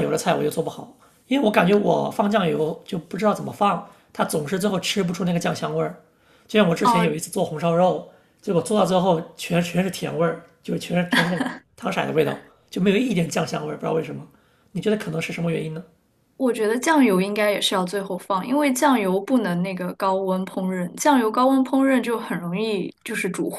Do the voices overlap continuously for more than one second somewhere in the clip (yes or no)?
no